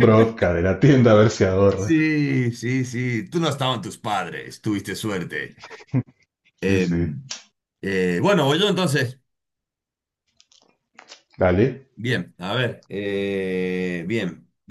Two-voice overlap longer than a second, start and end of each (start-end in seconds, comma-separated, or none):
none